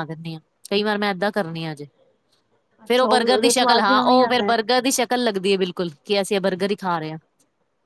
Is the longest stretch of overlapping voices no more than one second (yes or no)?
no